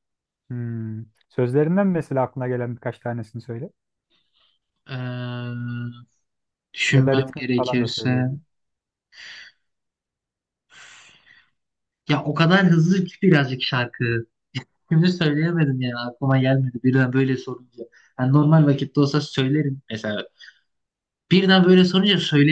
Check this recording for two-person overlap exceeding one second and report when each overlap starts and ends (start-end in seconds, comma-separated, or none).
6.9-8.3